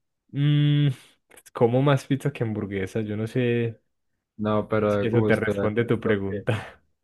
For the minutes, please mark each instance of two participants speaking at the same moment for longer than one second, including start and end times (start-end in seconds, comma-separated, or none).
4.9-6.5